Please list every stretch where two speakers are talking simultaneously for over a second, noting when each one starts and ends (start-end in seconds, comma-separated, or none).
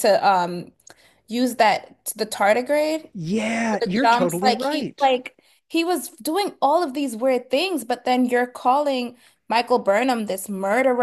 3.7-5.1